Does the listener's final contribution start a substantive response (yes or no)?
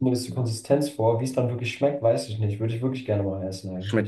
yes